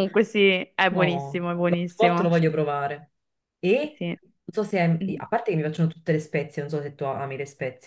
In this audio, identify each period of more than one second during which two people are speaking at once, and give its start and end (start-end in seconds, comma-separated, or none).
0.9-2.3